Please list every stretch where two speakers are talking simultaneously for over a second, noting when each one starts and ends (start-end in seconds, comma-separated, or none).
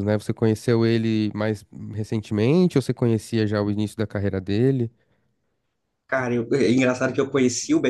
none